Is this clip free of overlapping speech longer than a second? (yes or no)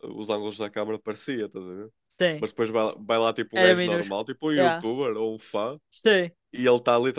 no